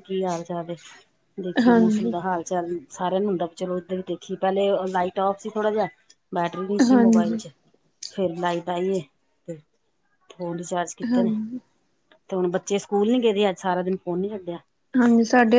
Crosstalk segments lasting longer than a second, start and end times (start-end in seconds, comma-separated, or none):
none